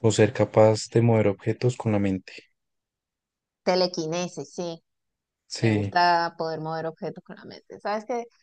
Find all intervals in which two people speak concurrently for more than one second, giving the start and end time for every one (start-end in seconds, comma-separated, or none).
none